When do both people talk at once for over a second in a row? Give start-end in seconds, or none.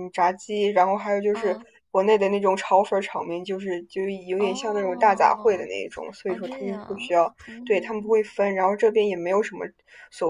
4.4-5.7, 6.3-8.2